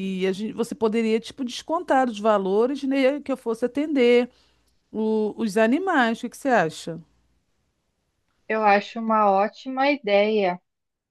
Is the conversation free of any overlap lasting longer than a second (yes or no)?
yes